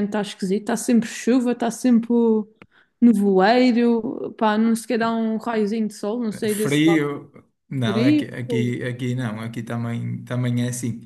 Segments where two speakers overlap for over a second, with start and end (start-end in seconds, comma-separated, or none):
none